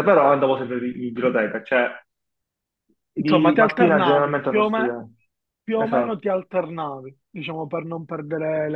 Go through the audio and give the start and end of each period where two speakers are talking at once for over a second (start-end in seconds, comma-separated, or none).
3.2-5.0